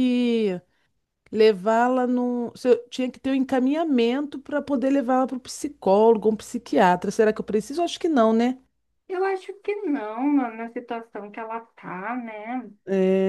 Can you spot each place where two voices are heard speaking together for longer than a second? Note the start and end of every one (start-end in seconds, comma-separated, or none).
none